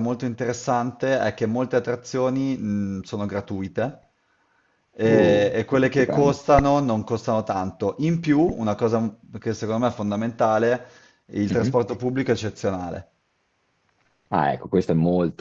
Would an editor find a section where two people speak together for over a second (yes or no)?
yes